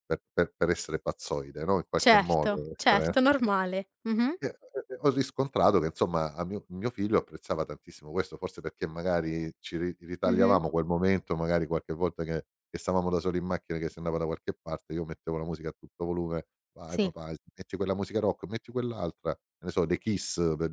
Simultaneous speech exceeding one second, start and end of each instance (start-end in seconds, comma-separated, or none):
1.9-3.2